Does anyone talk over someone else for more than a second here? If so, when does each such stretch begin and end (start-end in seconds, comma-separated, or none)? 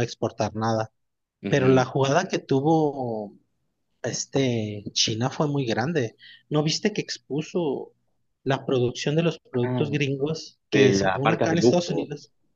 10.7-12.1